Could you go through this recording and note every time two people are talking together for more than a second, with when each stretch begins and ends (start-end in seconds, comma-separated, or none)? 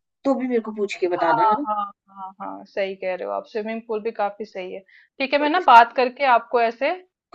none